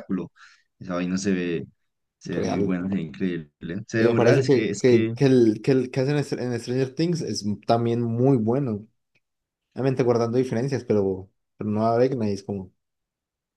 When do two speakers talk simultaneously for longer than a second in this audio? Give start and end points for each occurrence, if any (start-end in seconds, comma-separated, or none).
4.0-5.2